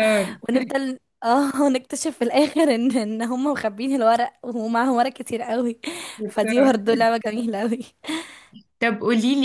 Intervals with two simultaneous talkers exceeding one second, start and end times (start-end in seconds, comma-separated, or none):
none